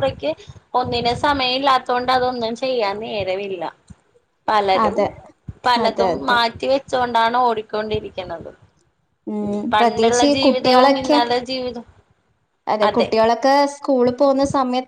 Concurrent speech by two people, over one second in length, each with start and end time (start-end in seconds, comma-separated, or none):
9.7-11.2